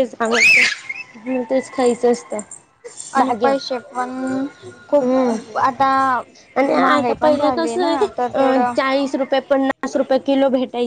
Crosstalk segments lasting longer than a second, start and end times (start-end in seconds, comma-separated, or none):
none